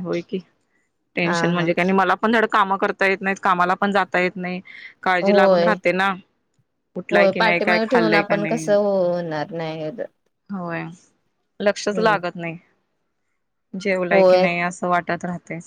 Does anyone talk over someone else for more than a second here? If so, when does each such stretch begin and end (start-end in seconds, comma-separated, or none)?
7.1-8.7